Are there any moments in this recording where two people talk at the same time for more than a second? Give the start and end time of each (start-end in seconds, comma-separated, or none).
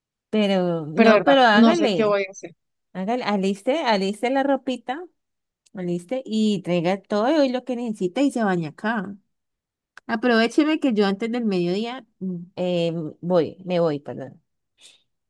0.9-2.2